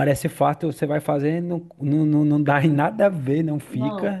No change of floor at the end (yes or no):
yes